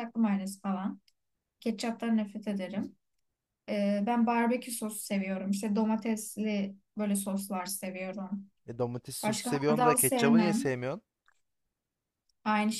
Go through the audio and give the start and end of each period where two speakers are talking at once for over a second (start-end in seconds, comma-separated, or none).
9.2-10.6